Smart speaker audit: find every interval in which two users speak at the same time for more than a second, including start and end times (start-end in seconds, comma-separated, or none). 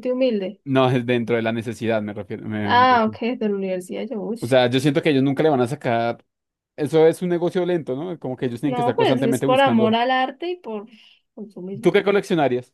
8.6-10.0